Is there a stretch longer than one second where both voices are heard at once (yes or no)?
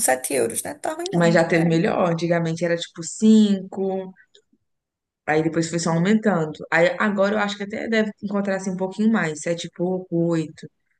no